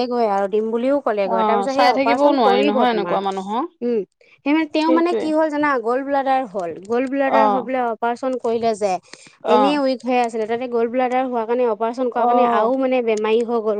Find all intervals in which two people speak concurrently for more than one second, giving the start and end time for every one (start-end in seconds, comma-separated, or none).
1.3-3.2